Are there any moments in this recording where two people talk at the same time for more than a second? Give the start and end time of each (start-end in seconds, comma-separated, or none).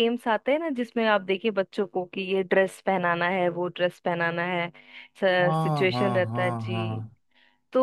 5.5-7.0